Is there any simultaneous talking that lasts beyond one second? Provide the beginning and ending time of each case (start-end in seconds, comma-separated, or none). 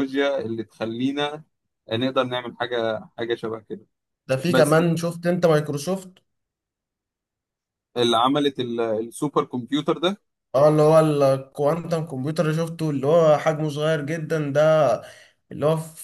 none